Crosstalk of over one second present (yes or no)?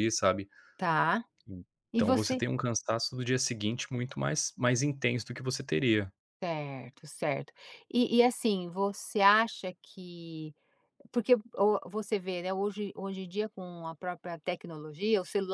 no